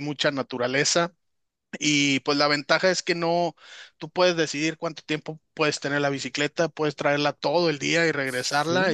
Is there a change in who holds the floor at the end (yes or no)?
no